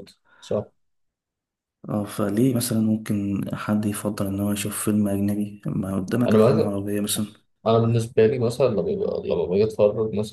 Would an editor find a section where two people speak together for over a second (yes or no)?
no